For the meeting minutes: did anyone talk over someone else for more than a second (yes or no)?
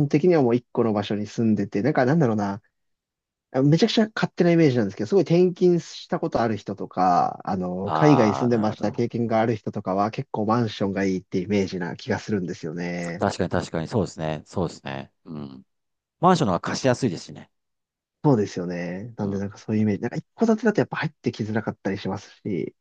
yes